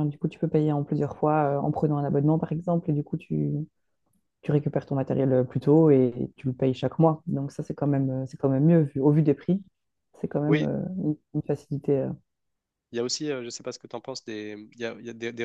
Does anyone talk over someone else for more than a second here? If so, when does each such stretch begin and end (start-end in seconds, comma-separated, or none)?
none